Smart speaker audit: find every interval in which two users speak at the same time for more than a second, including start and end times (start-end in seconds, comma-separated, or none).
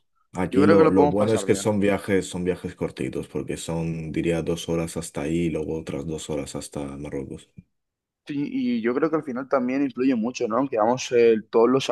0.5-1.7